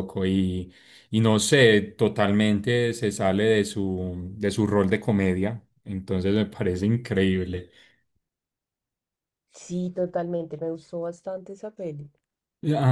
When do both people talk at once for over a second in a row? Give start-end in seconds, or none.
none